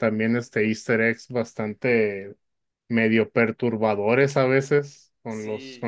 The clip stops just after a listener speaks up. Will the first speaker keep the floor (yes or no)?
no